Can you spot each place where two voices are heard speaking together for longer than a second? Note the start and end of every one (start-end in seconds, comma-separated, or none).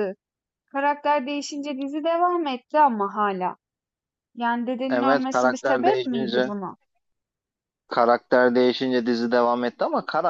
4.9-6.5